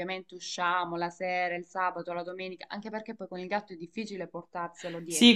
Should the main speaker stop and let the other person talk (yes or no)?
yes